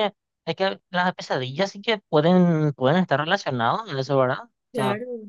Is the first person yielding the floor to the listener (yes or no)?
no